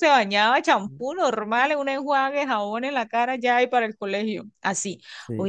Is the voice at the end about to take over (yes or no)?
no